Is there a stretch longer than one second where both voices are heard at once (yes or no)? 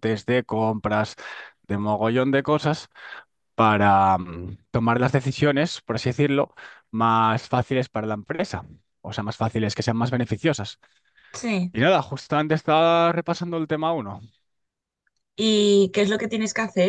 no